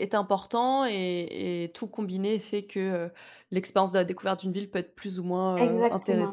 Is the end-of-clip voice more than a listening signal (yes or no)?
yes